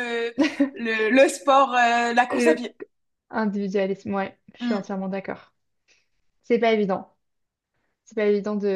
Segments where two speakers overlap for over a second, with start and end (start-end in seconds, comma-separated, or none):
none